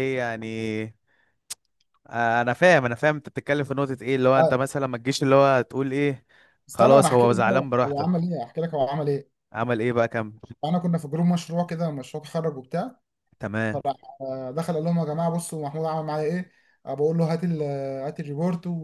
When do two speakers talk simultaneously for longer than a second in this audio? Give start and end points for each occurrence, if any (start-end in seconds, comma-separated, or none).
6.7-8.2